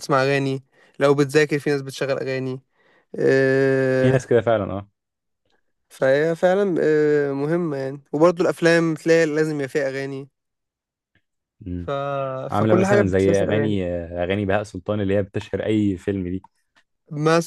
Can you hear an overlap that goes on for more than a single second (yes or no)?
yes